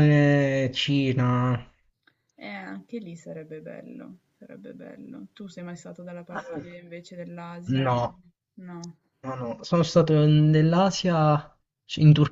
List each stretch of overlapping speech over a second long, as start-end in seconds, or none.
none